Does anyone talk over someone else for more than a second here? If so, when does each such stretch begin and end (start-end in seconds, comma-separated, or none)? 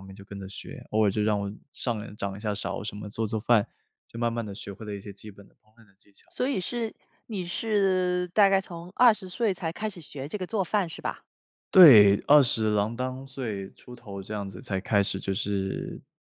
none